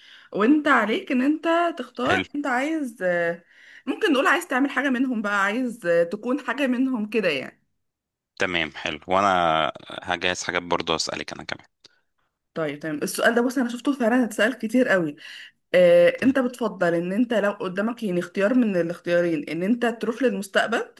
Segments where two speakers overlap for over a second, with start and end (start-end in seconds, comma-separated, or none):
none